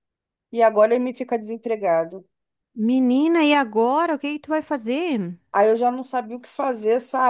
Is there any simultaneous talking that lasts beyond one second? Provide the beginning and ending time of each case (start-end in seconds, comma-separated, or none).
none